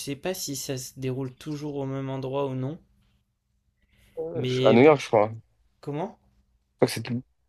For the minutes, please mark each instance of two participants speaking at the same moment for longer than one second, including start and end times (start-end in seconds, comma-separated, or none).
none